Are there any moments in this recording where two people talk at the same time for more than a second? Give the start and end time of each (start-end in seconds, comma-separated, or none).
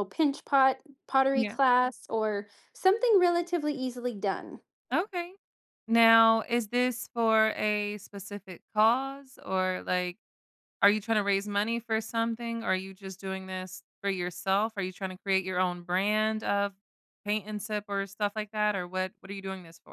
none